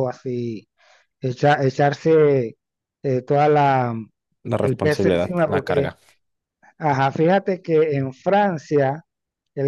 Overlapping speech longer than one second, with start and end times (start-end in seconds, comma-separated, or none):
4.6-5.9